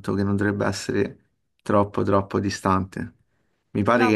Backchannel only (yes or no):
yes